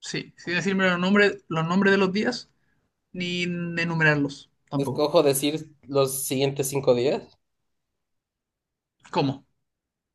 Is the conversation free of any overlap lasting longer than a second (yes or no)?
yes